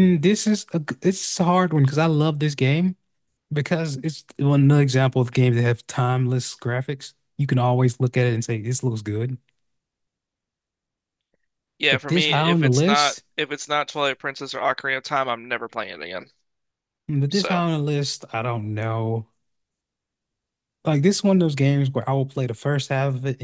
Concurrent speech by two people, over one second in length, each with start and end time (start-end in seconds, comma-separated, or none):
11.9-13.2